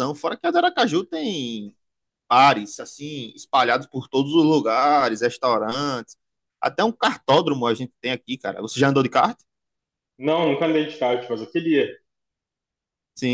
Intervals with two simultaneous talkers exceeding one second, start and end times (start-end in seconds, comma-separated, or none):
none